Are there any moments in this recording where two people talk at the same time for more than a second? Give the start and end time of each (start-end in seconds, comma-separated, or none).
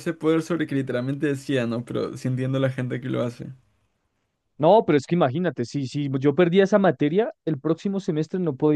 none